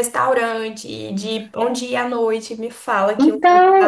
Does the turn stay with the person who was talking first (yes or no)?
no